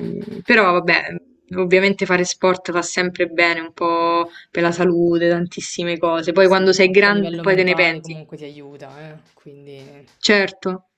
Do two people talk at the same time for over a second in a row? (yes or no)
yes